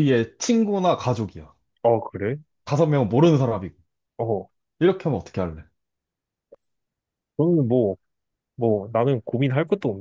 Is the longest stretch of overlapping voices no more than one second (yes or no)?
yes